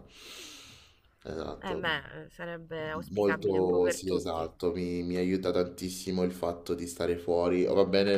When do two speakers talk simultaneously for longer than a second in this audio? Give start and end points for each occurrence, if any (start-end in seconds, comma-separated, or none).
3.1-4.5